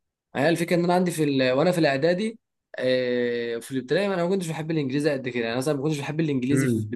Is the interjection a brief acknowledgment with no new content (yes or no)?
no